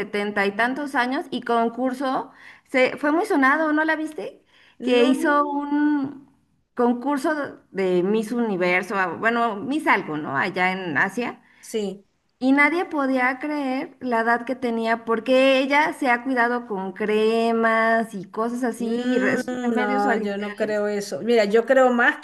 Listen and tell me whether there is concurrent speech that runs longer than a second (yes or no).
yes